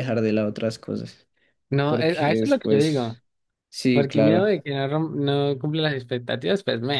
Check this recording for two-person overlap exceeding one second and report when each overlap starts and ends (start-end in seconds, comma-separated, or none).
1.9-3.2